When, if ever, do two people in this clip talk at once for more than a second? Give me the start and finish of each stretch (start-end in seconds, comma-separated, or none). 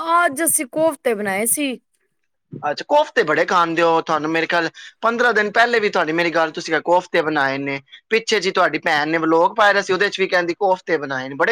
none